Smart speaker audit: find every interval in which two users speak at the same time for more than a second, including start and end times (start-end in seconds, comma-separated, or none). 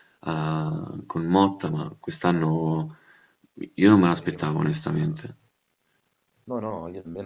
4.0-5.3